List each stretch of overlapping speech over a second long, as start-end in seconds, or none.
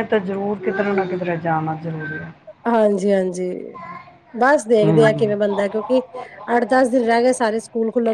none